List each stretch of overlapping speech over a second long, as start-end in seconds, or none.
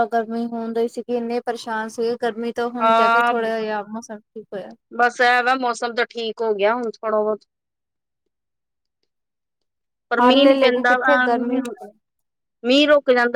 10.2-11.7